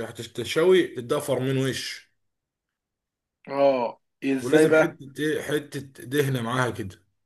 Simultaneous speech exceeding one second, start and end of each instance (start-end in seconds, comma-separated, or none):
none